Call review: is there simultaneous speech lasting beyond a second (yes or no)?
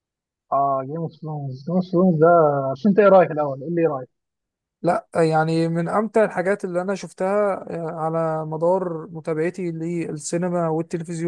no